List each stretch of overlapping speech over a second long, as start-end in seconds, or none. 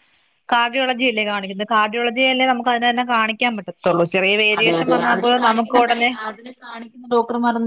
none